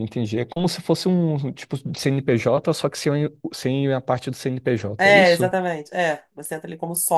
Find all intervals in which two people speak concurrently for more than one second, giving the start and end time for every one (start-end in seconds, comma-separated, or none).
none